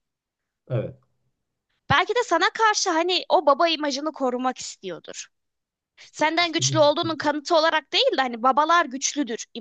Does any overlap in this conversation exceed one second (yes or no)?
yes